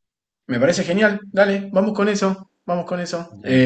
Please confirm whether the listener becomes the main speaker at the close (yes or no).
no